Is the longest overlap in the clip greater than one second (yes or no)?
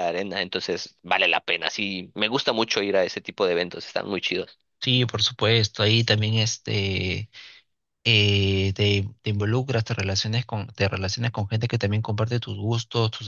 no